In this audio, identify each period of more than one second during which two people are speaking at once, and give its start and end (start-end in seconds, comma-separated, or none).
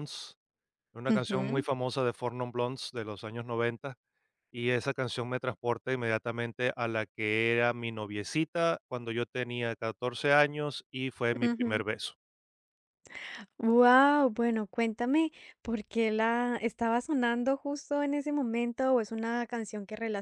none